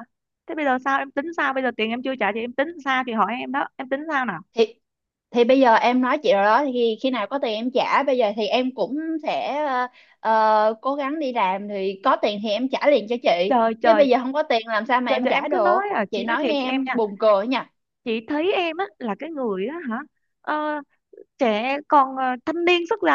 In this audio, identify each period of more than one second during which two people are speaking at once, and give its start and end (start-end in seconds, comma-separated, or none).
15.1-16.9